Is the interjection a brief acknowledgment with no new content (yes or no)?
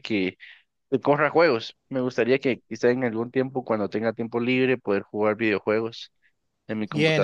no